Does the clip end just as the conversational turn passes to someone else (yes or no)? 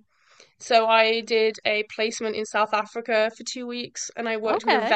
no